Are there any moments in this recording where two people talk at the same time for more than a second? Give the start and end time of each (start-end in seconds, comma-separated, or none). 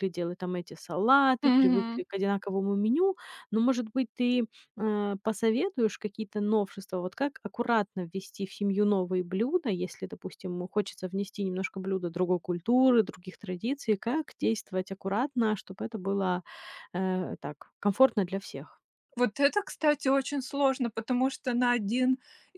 none